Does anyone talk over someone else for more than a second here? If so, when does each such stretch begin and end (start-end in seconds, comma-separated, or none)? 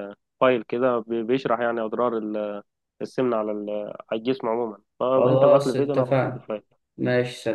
5.2-6.5